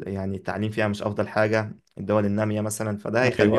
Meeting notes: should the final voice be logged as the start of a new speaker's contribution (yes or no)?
no